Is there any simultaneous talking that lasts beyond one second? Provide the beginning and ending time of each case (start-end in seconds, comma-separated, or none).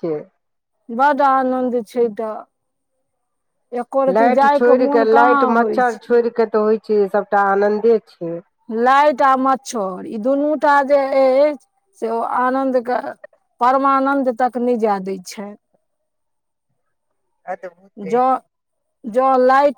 4.2-5.9